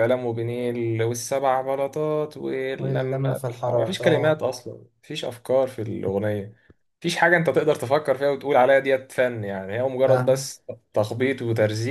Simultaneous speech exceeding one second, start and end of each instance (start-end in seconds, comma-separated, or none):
2.8-4.4